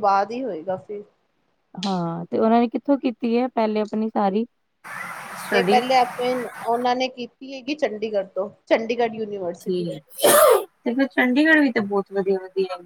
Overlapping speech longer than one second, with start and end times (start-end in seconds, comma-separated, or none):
none